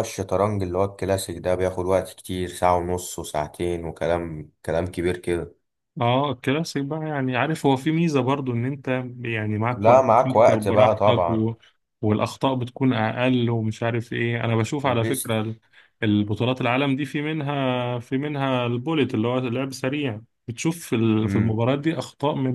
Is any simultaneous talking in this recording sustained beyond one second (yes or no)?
yes